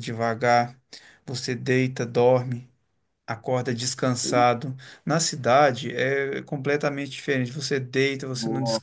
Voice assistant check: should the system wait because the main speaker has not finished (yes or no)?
yes